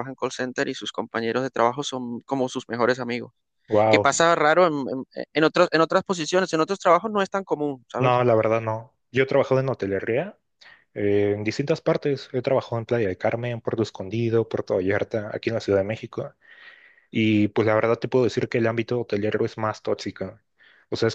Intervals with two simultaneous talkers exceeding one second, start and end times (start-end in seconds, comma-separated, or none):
none